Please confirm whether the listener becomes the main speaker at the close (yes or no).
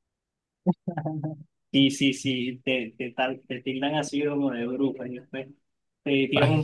no